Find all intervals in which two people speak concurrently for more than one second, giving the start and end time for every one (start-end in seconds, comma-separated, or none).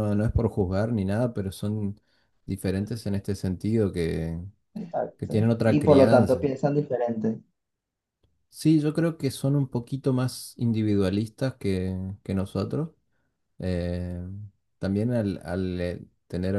5.2-6.5